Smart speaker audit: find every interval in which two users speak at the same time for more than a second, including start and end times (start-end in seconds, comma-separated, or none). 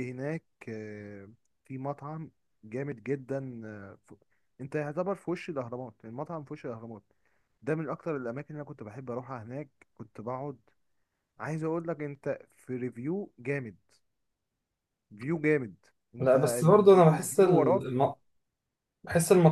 16.2-17.8